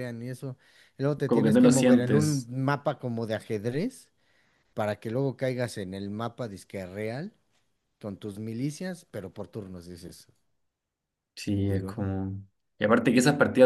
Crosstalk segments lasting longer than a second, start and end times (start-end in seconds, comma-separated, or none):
1.2-2.5